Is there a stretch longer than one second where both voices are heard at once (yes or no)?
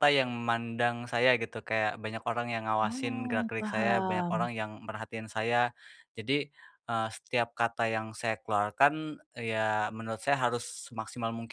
yes